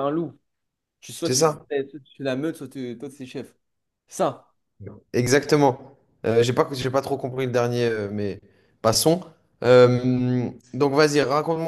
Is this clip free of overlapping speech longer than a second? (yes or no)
yes